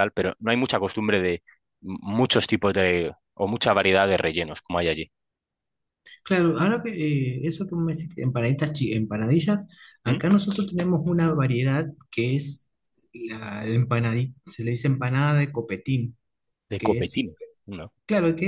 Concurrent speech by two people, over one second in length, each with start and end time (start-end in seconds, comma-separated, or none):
none